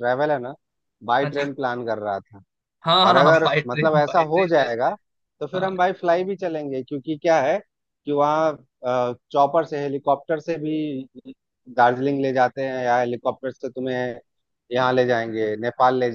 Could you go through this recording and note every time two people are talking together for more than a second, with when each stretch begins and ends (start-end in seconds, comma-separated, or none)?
3.0-4.9